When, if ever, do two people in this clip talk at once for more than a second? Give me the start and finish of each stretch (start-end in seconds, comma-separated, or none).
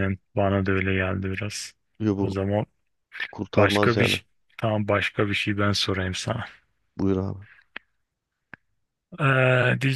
none